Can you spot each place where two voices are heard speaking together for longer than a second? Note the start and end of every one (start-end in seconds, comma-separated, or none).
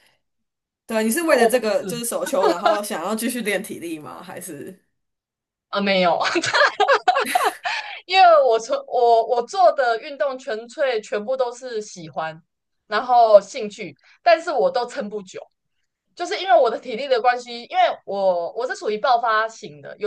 none